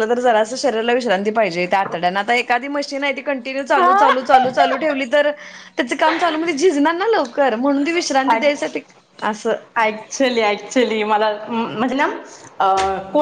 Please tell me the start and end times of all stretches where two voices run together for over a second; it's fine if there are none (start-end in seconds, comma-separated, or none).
none